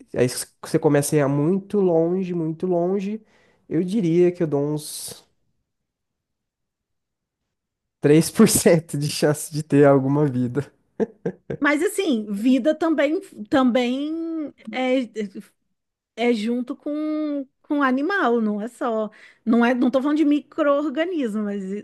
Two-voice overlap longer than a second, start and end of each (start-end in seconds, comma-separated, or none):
none